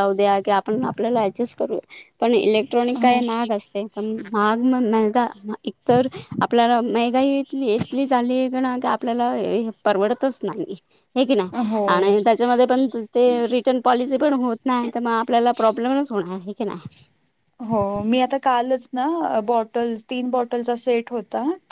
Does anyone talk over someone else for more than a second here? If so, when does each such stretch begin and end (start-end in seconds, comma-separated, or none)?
none